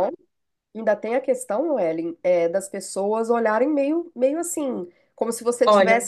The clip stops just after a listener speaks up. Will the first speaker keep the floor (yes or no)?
yes